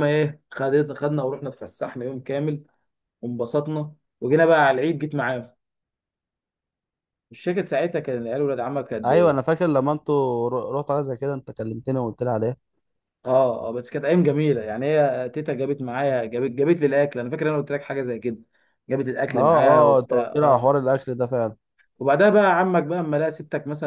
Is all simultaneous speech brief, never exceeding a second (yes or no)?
no